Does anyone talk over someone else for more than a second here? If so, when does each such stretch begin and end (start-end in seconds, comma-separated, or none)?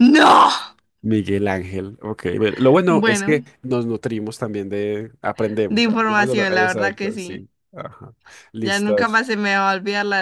5.7-7.5